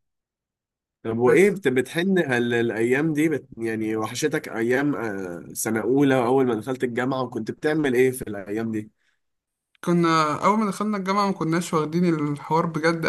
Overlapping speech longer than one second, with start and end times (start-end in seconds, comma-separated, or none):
none